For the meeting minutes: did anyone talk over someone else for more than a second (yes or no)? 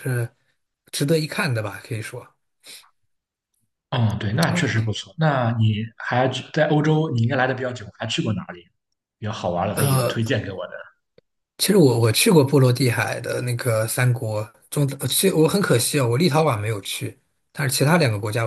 no